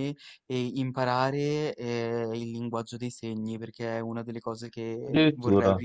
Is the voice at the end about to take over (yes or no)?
no